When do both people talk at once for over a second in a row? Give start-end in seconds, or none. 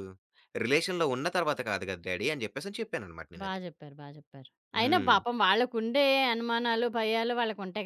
none